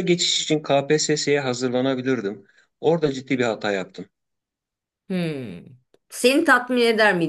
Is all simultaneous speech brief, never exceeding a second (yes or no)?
yes